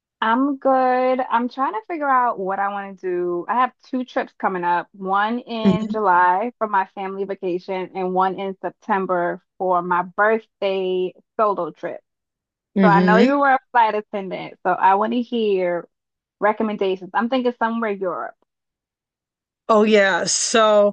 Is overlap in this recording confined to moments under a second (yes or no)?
yes